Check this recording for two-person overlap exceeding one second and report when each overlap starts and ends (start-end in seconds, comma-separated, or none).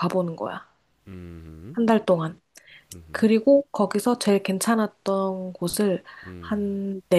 none